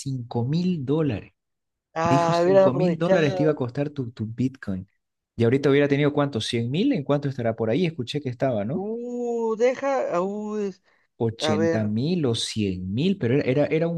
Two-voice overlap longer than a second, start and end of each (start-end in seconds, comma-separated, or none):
2.0-3.6